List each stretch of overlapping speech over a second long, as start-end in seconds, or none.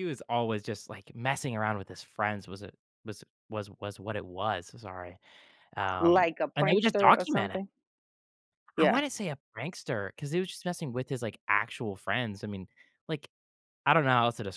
6.0-7.6